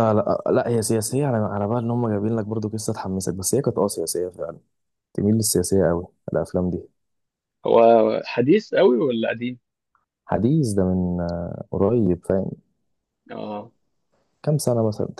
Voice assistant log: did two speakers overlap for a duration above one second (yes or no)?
no